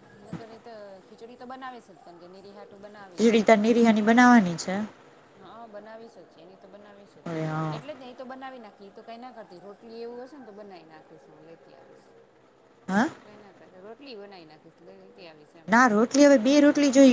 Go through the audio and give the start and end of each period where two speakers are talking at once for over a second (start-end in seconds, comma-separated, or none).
none